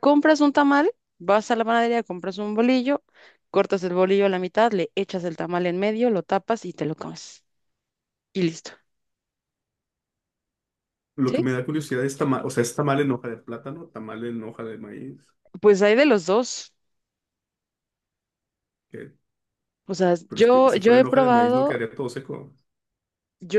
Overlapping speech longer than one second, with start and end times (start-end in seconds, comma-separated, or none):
20.3-21.8